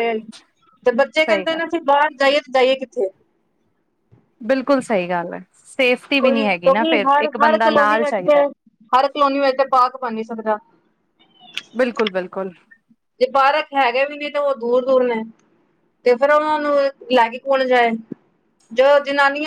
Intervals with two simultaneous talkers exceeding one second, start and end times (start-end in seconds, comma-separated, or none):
6.2-8.4